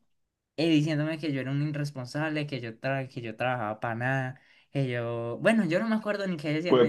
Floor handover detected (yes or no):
yes